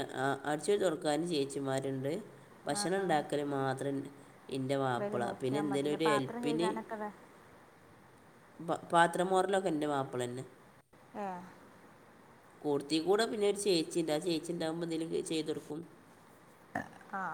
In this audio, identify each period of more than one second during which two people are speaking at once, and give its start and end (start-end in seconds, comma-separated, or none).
5.0-6.7